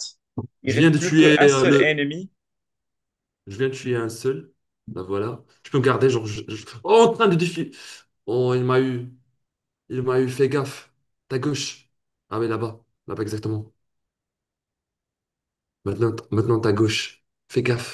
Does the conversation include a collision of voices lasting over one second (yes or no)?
yes